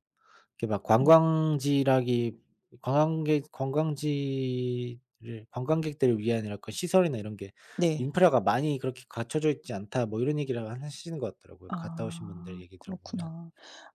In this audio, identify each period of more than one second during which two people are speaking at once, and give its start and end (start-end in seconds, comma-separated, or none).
11.7-13.3